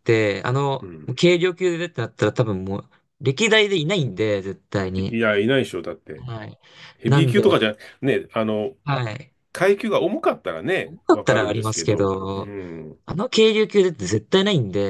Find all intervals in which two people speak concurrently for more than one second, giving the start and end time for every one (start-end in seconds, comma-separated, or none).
10.8-12.5